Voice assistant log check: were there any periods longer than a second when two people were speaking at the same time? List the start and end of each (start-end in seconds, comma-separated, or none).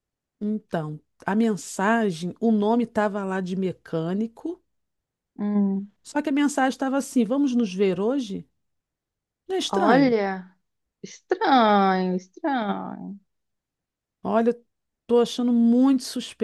none